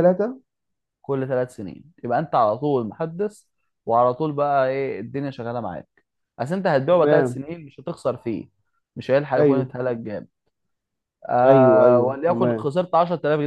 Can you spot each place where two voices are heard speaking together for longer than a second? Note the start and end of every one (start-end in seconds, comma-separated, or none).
11.4-12.7